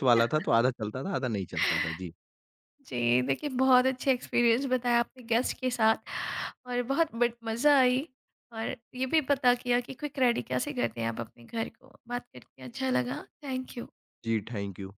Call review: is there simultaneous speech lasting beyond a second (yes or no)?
no